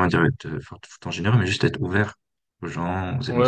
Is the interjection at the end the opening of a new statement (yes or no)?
yes